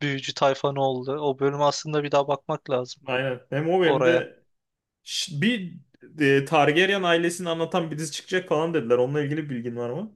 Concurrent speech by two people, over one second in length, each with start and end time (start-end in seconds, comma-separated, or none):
none